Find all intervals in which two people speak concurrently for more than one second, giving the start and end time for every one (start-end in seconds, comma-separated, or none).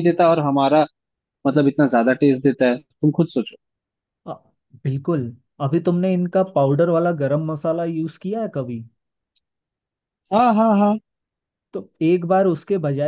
none